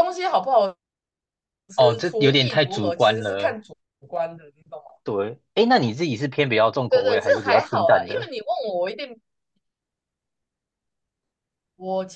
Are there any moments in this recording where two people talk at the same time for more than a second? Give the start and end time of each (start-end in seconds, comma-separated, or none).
6.9-8.3